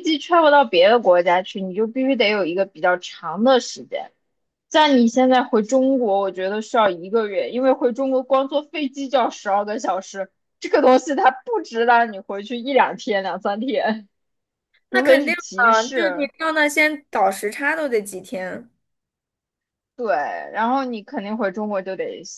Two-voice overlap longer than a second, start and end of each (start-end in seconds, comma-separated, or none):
14.9-16.3